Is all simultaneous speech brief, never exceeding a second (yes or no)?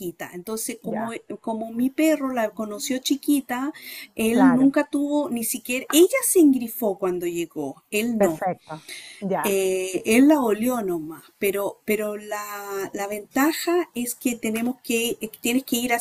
yes